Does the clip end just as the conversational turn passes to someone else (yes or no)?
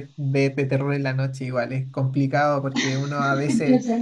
no